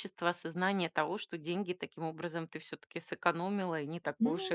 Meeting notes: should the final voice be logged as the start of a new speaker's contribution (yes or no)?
yes